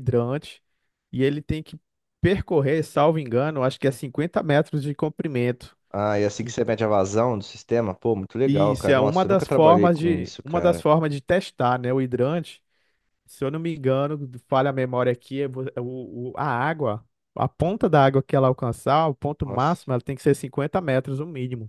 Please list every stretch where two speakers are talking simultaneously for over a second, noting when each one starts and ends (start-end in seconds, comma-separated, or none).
8.4-10.8